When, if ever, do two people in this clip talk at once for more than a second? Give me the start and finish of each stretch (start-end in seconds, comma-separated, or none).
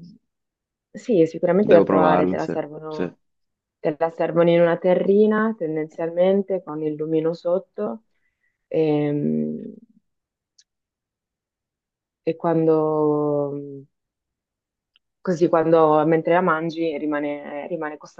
1.6-3.1